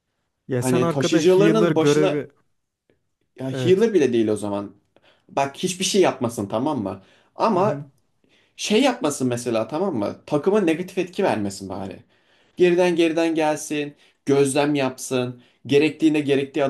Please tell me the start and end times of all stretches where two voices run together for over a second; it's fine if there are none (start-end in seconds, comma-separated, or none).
0.6-2.3